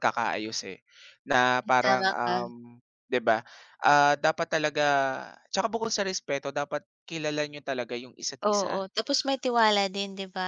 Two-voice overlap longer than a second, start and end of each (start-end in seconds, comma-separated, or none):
none